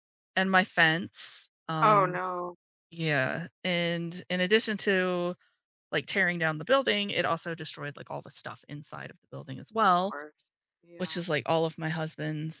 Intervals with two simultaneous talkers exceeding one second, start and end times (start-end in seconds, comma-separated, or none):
none